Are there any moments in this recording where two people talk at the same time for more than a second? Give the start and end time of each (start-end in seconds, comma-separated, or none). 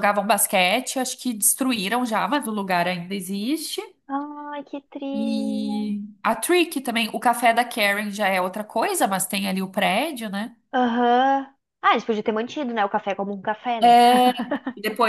none